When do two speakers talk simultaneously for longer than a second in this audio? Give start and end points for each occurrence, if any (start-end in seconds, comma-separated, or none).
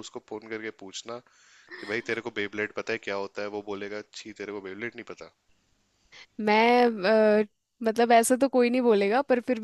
none